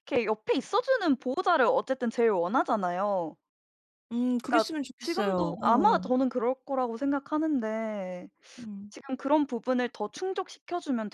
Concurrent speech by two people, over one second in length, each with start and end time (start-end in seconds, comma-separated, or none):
4.5-6.0